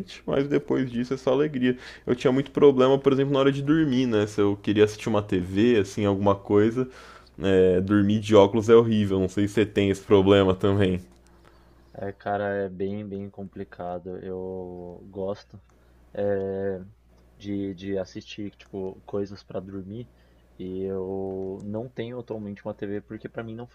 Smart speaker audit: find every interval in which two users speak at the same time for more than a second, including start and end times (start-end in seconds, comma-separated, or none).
none